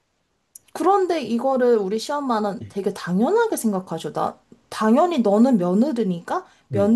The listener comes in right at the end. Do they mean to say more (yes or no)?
no